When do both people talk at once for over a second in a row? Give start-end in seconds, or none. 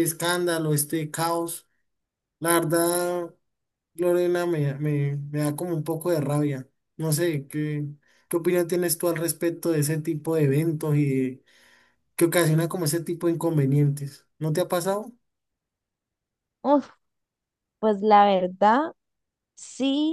none